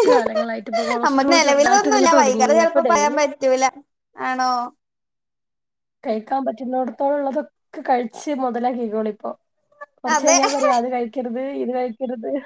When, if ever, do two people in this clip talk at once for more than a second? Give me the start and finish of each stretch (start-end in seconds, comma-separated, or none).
1.1-3.2